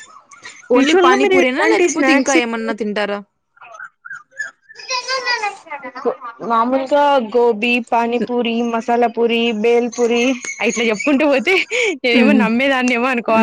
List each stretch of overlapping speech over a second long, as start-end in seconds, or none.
0.8-2.4